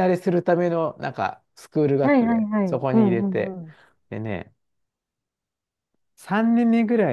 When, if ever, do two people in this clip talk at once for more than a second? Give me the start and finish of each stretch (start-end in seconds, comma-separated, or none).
2.0-3.6